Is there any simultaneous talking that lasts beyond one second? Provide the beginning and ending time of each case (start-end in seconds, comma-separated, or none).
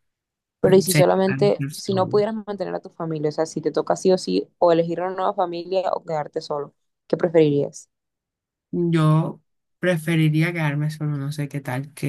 0.6-2.2